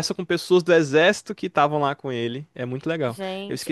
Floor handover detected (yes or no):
yes